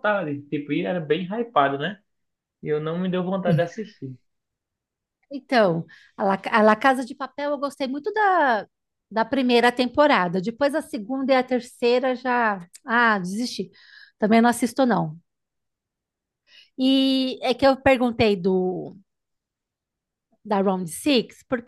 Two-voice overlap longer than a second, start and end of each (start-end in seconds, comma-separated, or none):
none